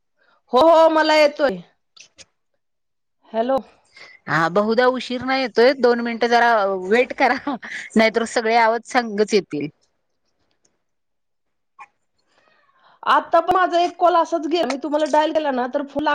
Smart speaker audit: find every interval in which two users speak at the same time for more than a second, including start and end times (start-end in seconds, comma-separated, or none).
none